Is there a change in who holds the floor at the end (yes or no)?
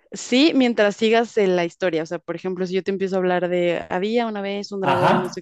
no